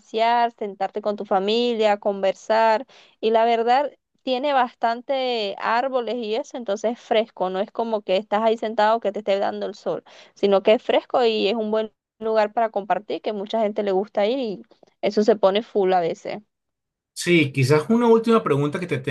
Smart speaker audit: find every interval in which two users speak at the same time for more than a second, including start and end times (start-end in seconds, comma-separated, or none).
none